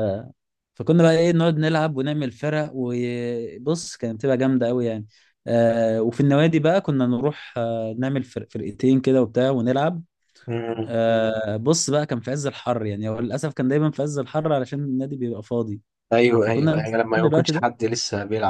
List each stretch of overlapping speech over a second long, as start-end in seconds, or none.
16.4-17.6